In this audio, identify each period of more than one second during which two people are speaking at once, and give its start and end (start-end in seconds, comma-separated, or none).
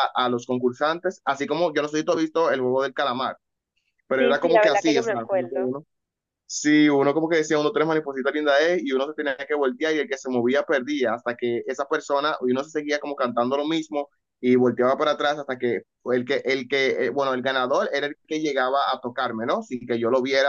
4.2-5.7